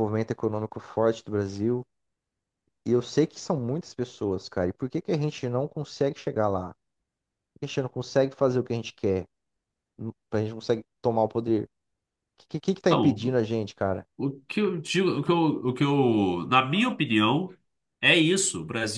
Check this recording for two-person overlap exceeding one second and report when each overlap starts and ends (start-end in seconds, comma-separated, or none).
none